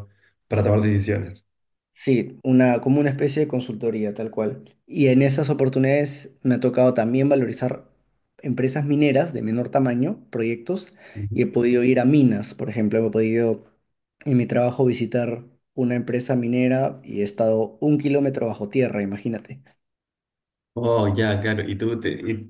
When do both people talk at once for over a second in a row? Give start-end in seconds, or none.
none